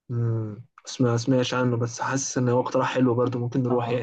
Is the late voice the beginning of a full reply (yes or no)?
yes